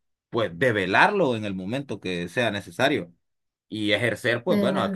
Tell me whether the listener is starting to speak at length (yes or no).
no